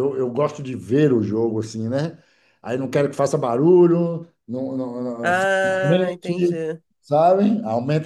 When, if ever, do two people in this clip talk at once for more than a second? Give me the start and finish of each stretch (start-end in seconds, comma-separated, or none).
5.2-6.6